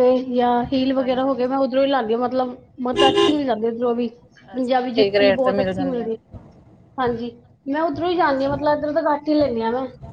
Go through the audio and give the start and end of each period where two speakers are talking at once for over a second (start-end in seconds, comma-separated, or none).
4.5-6.2